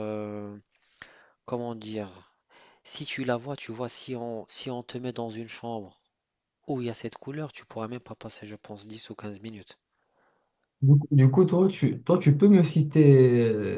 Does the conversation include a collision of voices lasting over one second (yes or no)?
no